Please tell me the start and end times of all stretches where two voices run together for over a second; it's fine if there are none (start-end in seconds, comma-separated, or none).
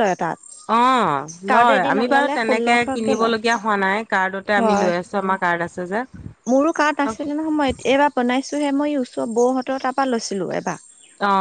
1.5-3.3